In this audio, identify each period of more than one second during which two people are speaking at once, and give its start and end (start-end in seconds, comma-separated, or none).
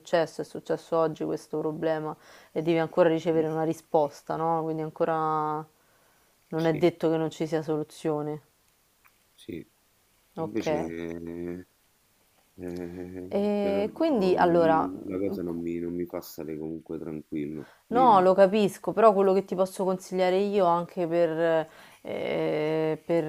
13.3-14.9